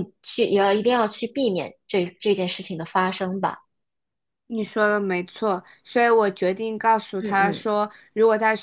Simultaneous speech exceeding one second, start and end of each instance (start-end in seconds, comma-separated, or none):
none